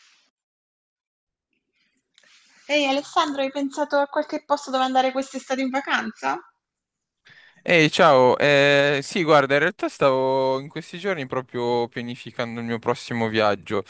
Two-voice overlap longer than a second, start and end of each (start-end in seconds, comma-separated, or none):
none